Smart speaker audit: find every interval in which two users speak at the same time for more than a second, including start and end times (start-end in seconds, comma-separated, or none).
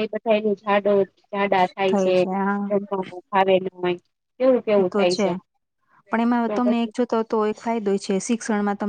none